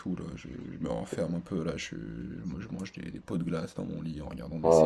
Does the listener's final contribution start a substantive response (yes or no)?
yes